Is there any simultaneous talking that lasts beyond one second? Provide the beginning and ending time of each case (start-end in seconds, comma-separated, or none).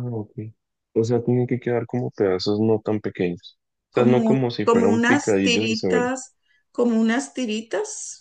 3.9-6.1